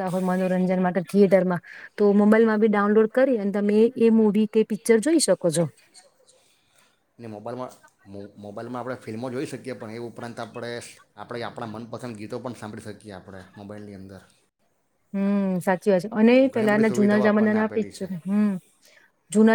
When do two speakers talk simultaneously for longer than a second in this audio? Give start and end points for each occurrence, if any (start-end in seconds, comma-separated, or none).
16.5-18.1